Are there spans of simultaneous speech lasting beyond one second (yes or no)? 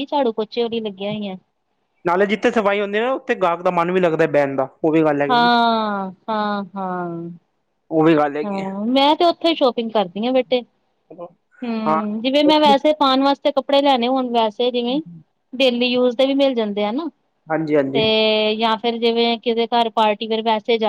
no